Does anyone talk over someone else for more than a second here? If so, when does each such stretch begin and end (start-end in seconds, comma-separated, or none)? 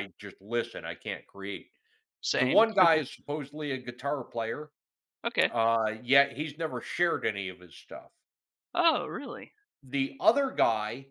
none